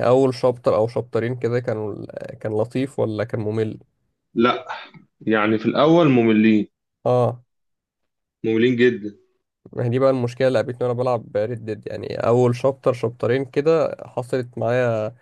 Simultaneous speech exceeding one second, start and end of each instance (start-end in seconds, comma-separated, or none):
none